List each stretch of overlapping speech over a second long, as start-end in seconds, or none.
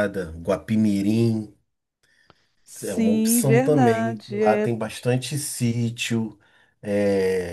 2.8-4.7